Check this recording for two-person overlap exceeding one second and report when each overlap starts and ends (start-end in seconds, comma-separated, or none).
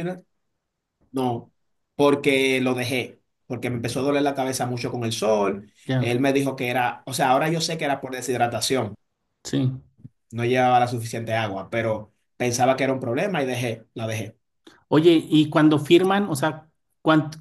none